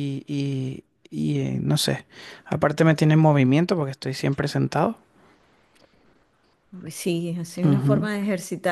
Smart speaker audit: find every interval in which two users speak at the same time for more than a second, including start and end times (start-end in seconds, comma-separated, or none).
none